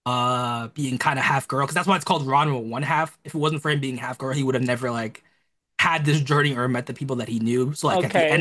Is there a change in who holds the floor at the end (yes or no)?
yes